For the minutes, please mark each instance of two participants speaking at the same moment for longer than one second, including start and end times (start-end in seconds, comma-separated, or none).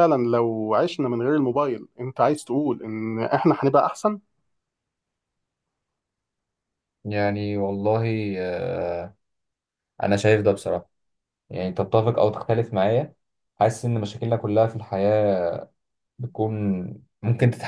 none